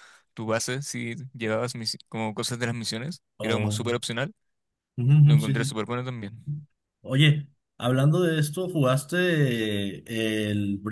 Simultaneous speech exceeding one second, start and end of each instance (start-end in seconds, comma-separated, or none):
none